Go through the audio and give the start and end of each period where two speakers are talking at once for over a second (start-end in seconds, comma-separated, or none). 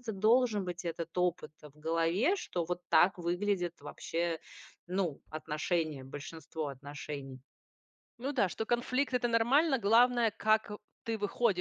none